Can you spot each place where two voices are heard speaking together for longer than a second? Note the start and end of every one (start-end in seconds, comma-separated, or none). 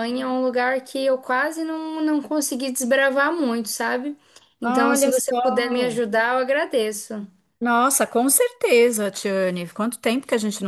4.6-5.9